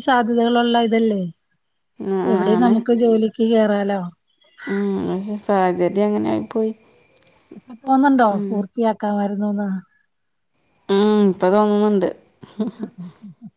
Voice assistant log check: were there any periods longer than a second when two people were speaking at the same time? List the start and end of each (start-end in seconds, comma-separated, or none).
none